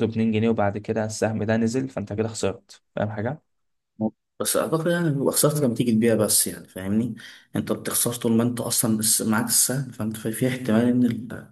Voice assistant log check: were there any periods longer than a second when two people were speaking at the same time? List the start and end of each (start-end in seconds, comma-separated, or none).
none